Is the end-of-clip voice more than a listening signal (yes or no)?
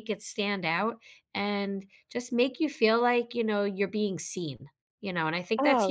yes